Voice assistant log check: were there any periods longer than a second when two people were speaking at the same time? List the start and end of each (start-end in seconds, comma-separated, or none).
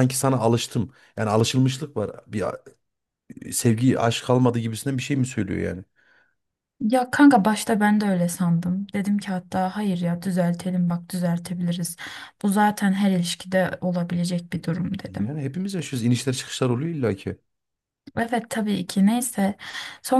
none